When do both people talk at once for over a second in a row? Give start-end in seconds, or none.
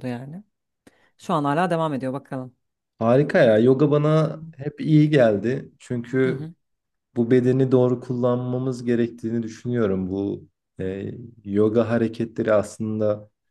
none